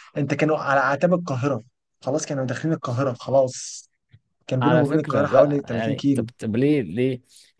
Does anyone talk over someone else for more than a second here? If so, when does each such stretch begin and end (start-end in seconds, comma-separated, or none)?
4.6-6.3